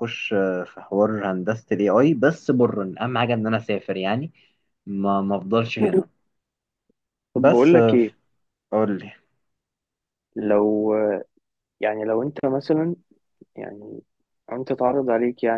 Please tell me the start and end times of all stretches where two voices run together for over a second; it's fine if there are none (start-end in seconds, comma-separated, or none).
none